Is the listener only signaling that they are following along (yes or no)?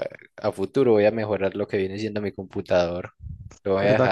no